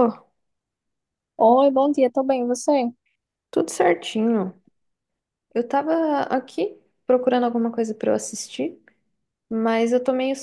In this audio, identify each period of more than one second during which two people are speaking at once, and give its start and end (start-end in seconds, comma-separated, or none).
none